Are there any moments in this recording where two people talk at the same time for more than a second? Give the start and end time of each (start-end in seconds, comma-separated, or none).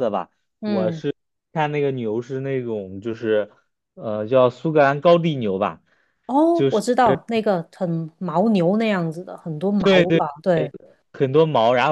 none